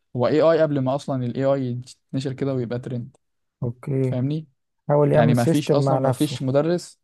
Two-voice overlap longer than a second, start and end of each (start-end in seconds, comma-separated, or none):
5.1-6.4